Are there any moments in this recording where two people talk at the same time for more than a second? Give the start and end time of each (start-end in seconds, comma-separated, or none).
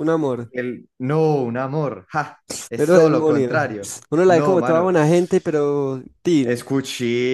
2.8-4.9